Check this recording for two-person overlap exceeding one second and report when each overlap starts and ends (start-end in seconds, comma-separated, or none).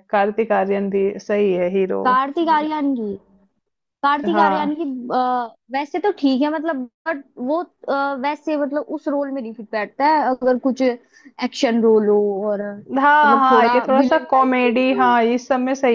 13.0-15.1